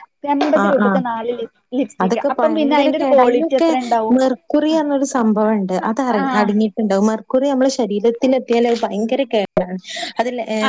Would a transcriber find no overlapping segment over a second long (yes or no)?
no